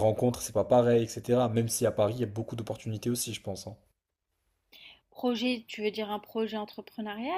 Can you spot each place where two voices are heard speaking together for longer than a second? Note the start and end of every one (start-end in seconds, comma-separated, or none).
none